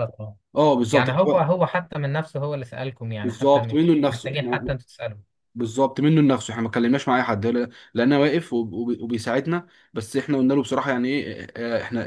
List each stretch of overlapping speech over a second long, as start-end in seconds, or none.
3.2-4.7